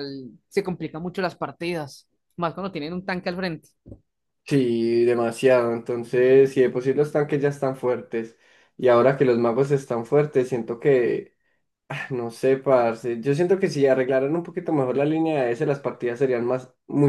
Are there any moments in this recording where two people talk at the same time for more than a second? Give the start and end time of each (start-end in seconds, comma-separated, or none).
none